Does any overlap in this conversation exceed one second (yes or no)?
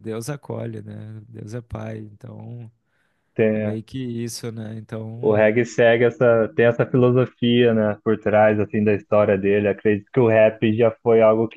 no